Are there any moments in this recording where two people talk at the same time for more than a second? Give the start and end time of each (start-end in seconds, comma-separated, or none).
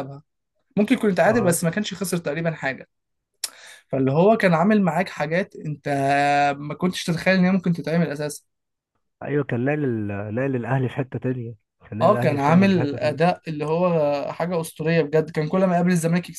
12.0-13.3